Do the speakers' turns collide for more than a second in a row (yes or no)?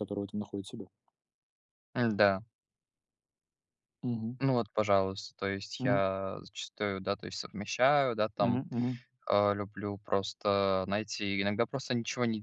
no